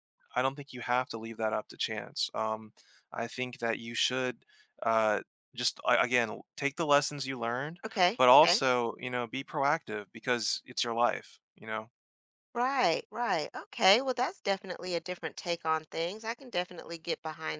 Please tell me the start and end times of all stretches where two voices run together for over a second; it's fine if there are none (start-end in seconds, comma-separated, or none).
none